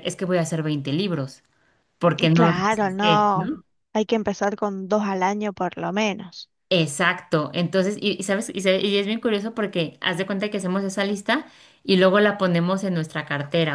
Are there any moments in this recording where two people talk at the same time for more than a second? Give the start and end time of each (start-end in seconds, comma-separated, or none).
2.3-3.5